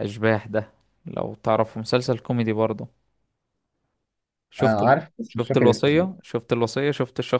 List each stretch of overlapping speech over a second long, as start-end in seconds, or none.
4.6-6.1